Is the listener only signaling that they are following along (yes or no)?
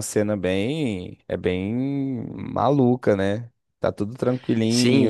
no